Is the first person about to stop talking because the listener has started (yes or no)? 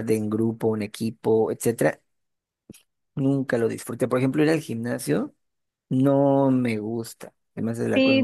yes